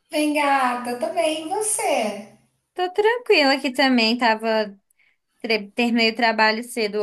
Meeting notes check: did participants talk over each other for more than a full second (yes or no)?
no